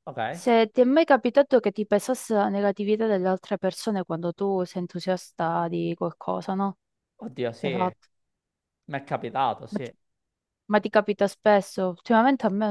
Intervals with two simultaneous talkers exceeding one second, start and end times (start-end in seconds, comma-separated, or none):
none